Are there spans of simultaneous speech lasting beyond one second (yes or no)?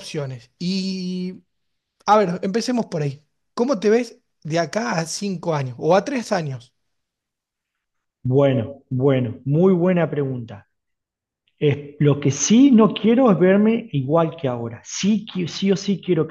no